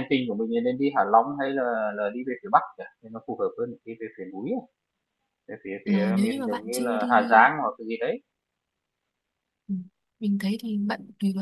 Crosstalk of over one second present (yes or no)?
yes